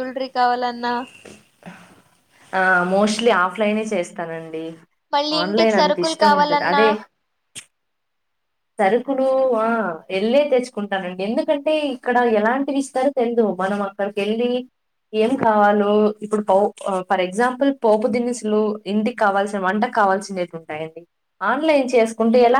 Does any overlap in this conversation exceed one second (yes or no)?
yes